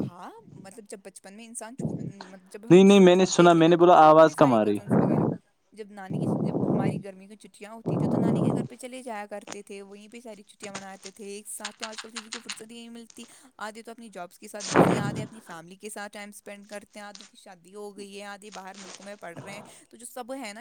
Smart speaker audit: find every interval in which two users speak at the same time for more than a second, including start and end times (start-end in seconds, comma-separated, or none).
2.5-4.8